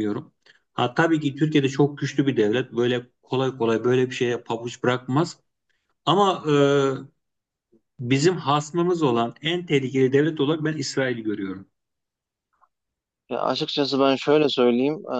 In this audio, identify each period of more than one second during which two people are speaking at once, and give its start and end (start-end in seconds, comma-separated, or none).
none